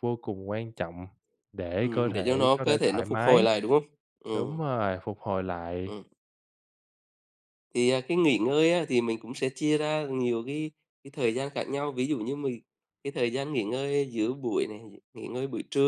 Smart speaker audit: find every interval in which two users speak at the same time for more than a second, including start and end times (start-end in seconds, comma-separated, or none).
1.8-3.5